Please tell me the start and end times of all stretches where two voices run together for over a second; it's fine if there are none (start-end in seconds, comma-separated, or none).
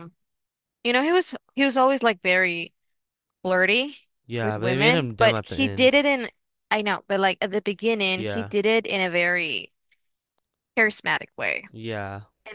4.4-6.0